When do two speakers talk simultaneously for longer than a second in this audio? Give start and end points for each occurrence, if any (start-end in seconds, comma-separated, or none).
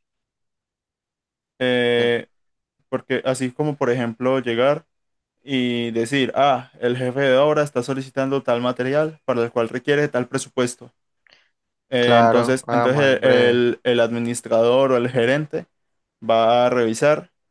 12.0-13.6